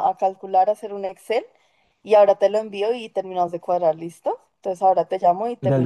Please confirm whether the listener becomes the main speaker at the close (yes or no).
yes